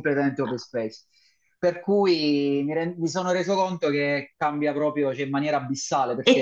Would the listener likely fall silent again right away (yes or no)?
no